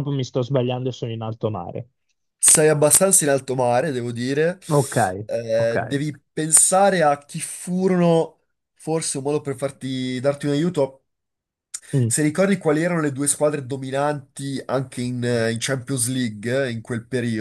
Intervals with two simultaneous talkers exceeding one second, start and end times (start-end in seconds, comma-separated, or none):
none